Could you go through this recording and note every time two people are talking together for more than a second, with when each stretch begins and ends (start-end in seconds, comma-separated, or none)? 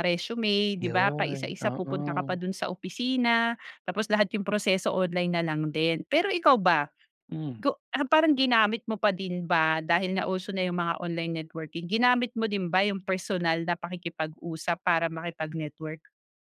0.8-2.4